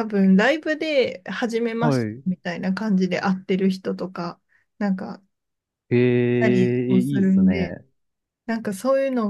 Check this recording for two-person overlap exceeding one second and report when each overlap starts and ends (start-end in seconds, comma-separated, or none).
6.4-7.7